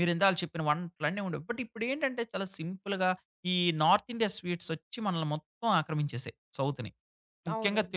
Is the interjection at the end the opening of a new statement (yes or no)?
no